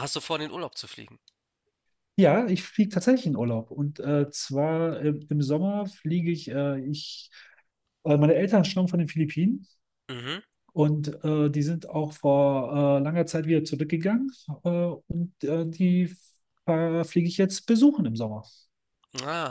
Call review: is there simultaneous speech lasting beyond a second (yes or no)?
no